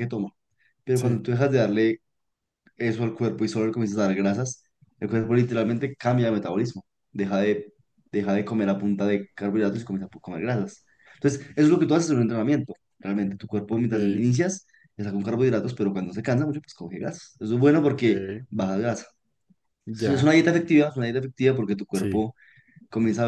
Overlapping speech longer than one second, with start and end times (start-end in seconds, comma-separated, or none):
none